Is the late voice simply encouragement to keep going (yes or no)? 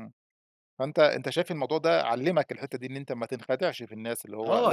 no